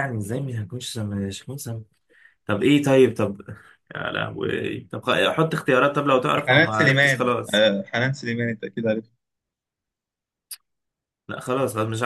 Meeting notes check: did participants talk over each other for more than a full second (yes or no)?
yes